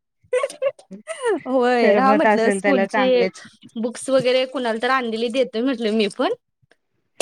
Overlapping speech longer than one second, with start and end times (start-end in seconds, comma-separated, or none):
1.8-3.2